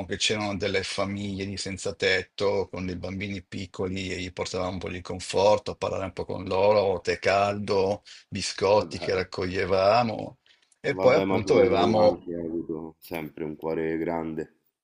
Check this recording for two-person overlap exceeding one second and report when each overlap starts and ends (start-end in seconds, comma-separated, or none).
10.9-12.2